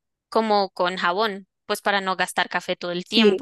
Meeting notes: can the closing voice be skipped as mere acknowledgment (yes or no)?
yes